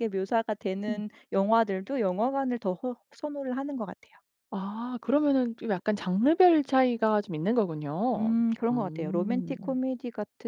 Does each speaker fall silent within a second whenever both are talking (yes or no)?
no